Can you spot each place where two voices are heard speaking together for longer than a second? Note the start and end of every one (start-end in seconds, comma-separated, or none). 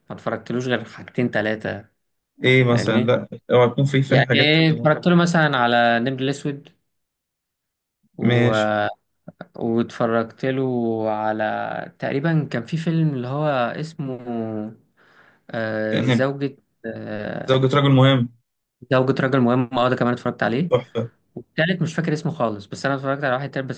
none